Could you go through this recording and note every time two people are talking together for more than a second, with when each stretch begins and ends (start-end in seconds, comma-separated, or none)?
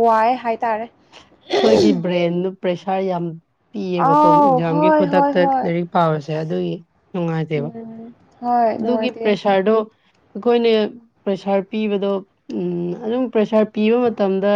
4.0-5.6